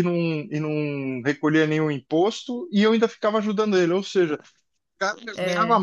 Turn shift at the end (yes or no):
no